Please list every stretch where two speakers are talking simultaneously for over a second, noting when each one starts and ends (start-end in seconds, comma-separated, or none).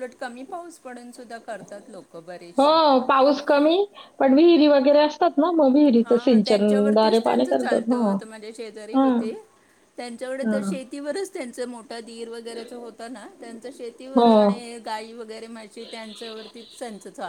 6.0-8.0